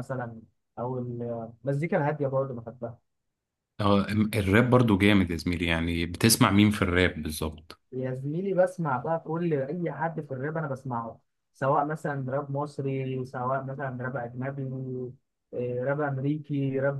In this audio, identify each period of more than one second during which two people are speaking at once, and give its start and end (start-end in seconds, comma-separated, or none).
none